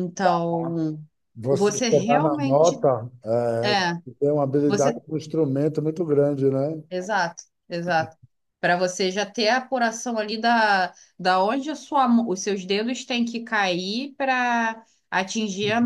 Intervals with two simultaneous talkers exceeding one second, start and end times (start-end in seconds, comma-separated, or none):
1.5-2.9